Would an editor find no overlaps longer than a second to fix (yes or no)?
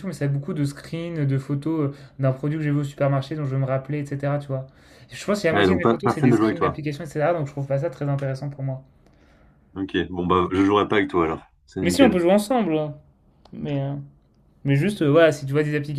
no